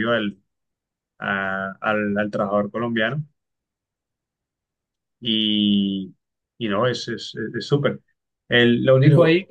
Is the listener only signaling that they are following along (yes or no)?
yes